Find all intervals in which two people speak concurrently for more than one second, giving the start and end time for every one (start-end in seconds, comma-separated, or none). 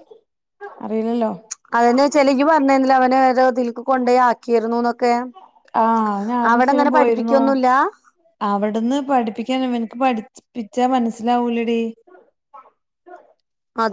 none